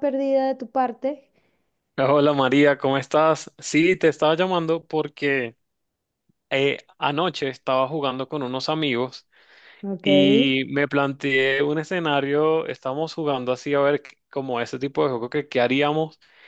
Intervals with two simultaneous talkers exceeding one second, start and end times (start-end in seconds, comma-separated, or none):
none